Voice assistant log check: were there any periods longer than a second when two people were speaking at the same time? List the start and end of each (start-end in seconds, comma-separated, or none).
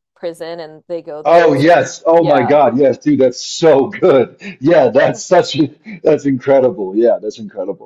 1.2-2.6